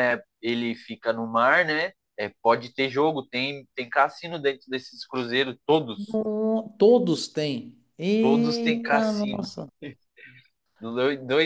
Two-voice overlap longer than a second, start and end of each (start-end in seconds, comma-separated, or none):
8.2-9.5